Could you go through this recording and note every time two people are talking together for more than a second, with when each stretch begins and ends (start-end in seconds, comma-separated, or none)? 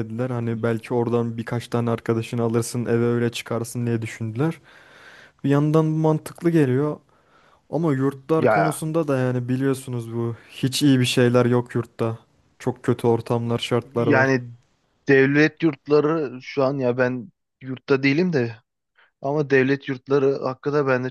none